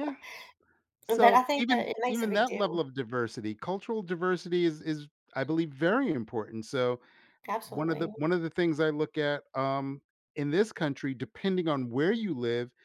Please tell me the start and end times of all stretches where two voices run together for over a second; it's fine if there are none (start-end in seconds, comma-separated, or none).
1.1-2.8